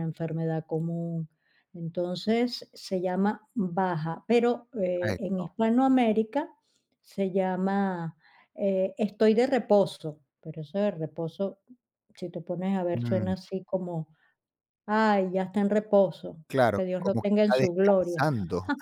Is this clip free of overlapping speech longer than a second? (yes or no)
no